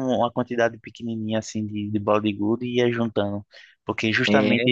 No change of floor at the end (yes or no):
yes